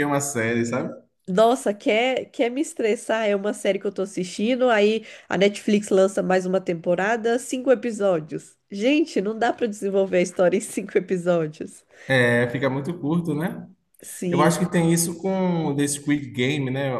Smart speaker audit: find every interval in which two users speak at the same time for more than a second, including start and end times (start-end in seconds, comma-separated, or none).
none